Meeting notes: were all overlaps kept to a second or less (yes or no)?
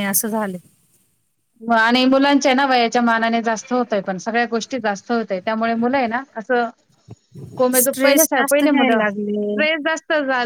no